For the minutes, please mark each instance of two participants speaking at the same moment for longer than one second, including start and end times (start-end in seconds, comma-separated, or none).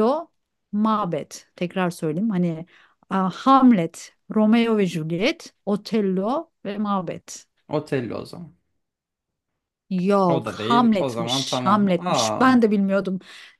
10.3-12.5